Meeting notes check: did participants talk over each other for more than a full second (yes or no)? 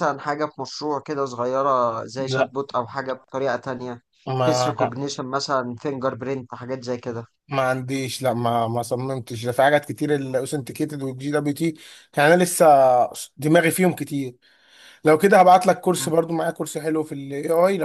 no